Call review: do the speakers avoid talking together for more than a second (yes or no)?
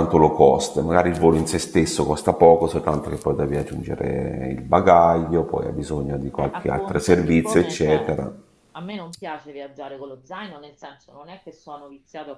no